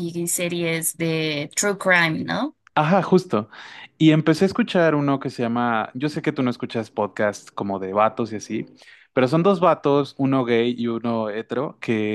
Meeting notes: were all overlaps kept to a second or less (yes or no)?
yes